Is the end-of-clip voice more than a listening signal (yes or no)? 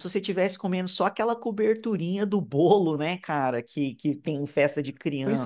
yes